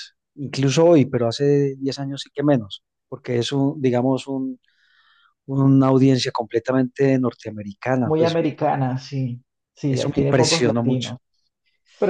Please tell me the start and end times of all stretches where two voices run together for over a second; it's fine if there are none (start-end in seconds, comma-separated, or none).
9.9-11.1